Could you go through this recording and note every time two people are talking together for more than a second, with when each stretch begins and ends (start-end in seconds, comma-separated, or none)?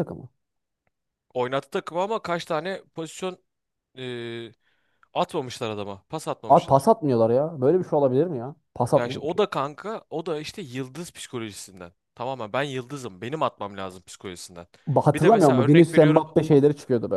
15.1-16.6